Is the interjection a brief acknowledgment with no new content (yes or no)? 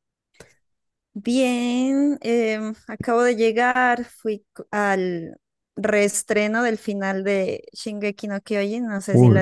no